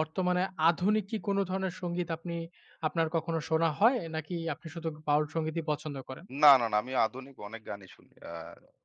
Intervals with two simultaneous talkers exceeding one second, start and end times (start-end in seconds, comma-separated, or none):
none